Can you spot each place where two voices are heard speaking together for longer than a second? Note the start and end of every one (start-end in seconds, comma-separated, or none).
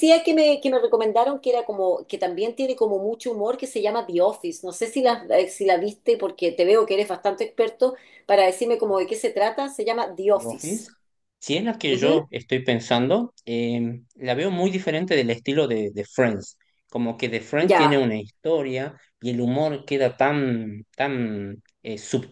none